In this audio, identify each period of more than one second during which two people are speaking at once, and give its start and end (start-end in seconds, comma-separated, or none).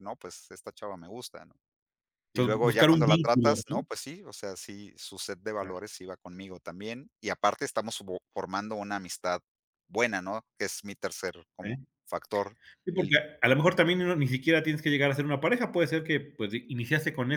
2.3-3.8